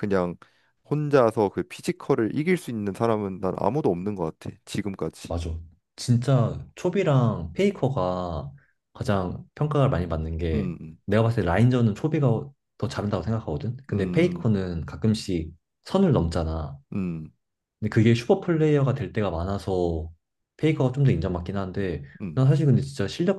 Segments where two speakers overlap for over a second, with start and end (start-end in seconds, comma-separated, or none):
none